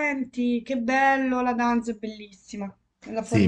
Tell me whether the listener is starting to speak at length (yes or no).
yes